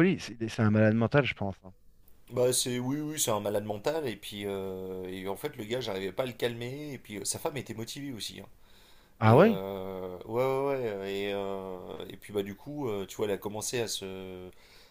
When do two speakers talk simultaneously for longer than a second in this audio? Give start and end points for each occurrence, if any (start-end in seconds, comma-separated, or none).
none